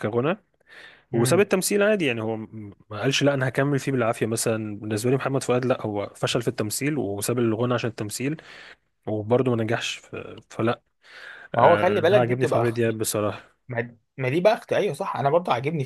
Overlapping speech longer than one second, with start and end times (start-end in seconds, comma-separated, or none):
11.6-13.0